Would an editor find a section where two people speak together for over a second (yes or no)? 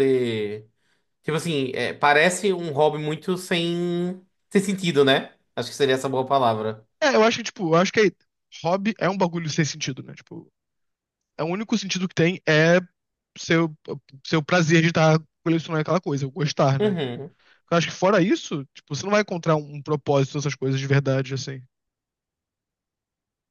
no